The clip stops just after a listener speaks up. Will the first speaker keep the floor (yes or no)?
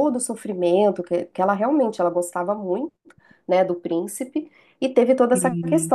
yes